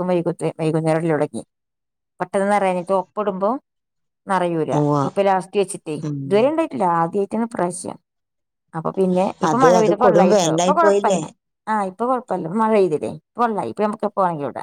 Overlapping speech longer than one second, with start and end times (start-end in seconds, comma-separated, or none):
9.5-11.2